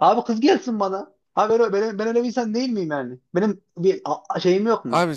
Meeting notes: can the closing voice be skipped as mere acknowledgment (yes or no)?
no